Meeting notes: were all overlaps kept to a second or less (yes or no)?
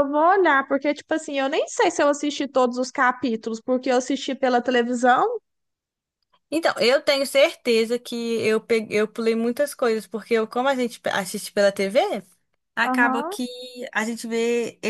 yes